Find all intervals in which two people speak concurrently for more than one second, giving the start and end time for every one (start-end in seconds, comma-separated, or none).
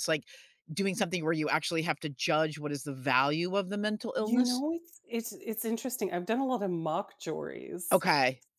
none